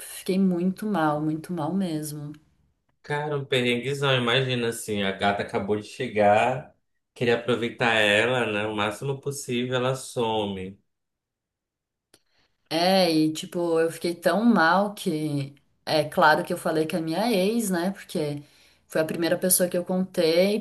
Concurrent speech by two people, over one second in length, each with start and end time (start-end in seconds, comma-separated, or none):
none